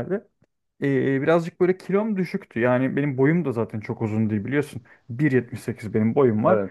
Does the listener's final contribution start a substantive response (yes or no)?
no